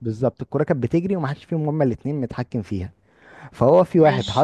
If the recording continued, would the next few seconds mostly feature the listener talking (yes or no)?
no